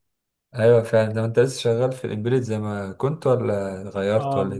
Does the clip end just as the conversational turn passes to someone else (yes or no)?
yes